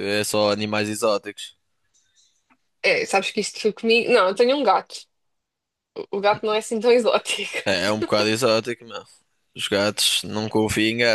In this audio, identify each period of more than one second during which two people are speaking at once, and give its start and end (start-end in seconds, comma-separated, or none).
none